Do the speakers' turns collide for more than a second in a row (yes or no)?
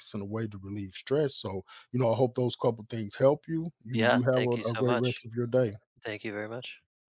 yes